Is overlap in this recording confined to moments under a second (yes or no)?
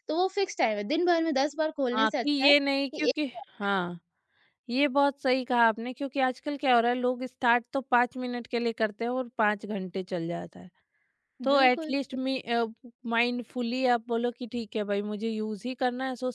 no